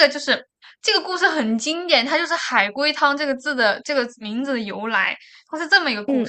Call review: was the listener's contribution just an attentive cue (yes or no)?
yes